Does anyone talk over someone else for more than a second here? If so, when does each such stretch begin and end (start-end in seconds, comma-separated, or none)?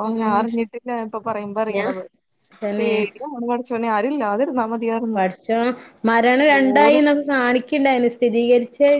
none